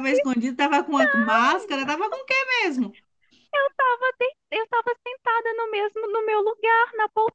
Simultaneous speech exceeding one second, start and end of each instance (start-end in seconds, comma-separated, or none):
none